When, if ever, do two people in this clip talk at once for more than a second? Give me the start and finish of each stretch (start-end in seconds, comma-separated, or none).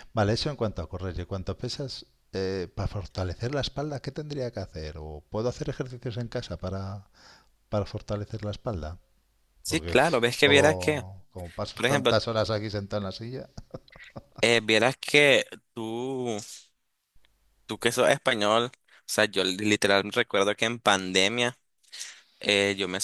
9.7-11.0